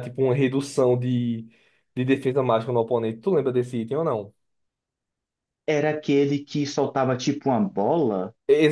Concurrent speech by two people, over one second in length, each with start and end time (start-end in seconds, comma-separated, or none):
none